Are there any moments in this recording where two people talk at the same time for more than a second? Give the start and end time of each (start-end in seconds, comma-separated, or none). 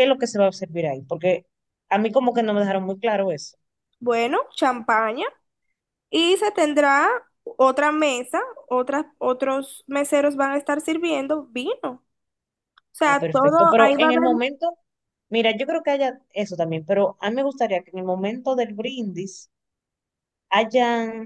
13.0-14.3